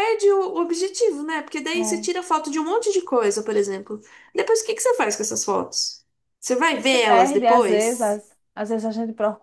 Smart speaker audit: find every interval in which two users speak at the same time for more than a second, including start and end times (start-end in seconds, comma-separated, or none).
6.8-8.2